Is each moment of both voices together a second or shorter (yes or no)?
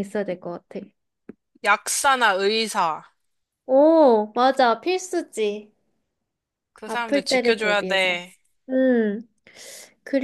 no